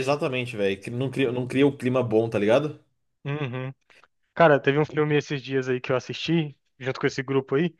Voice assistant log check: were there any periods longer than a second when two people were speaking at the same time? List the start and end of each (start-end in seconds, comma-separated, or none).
none